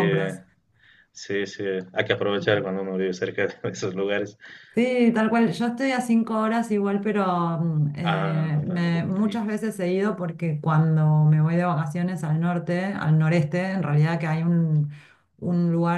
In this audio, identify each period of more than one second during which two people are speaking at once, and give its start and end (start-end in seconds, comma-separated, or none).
8.0-9.6